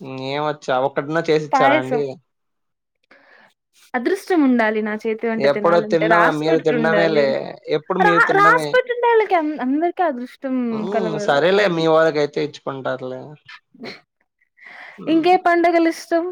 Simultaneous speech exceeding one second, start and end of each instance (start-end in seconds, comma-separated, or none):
5.5-7.2